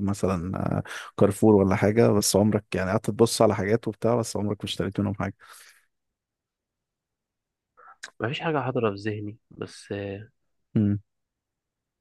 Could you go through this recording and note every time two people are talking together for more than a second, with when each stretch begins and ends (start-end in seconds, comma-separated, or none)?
none